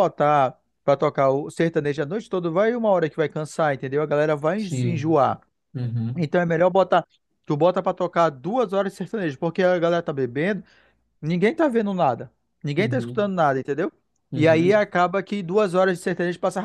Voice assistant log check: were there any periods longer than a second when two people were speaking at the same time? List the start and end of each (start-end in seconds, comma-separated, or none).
none